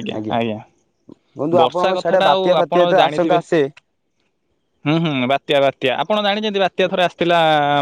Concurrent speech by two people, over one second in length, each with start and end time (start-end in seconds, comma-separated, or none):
1.6-3.4